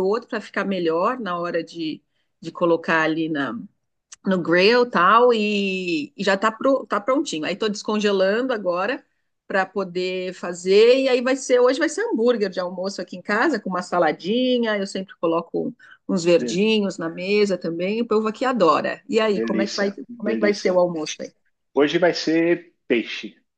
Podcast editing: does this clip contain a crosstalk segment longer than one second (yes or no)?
yes